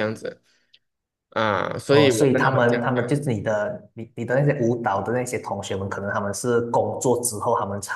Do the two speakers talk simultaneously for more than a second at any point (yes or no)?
yes